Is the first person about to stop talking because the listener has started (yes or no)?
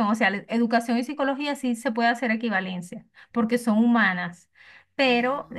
no